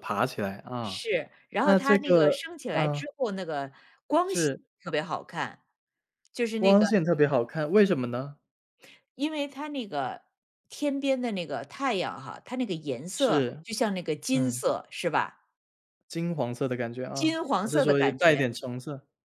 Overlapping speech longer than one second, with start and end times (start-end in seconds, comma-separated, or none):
1.6-3.0, 17.1-18.5